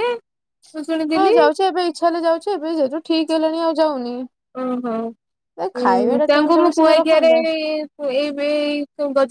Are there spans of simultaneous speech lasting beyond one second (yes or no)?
yes